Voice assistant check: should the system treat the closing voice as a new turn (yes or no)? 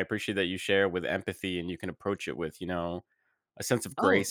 yes